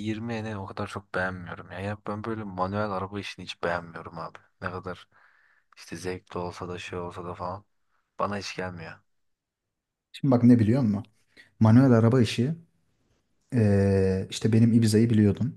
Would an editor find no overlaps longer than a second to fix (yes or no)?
yes